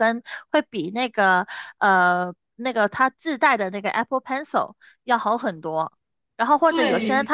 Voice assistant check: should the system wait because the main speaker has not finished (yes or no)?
yes